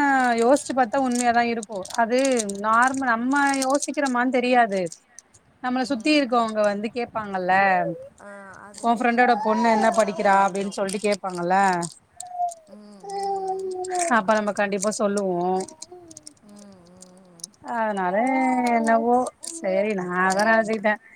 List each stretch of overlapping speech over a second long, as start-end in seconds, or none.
8.9-10.7